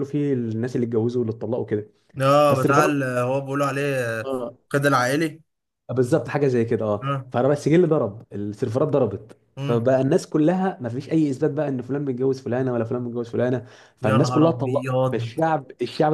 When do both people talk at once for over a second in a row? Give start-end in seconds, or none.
14.0-15.4